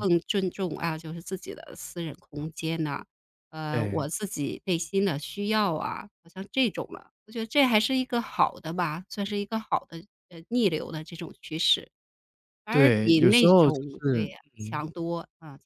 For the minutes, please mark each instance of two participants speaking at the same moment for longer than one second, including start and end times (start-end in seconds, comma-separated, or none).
12.7-14.8